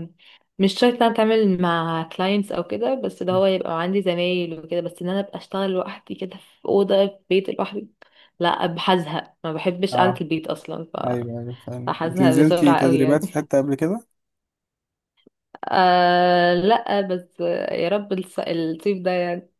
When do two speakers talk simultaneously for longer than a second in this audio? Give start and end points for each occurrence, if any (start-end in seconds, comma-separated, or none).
11.8-13.2